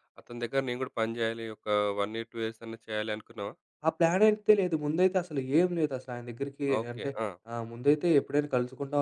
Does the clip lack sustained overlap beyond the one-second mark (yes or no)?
yes